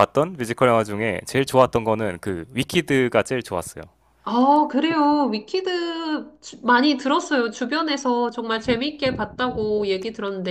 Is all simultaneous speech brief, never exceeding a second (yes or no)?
yes